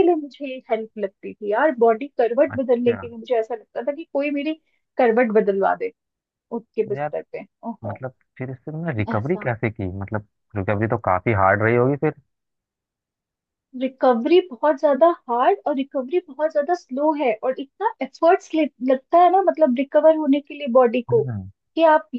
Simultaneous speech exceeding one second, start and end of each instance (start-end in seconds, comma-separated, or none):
none